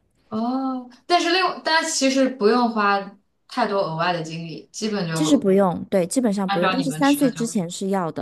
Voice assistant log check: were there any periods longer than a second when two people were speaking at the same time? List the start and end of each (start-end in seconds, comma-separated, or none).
6.5-7.7